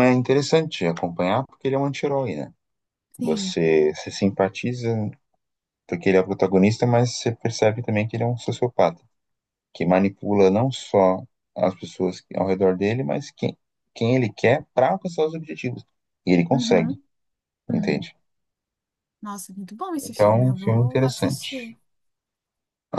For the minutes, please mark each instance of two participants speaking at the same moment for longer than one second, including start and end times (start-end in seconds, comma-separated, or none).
20.0-21.7